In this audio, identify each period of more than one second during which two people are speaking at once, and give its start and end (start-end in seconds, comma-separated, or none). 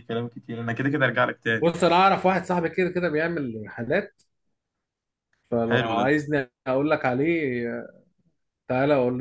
none